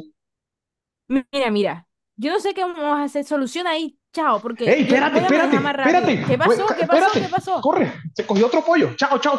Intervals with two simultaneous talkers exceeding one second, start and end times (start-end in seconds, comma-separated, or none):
4.6-7.7